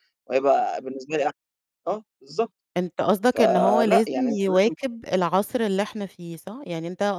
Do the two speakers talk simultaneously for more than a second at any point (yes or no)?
yes